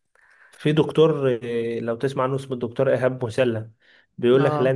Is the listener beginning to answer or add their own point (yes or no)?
no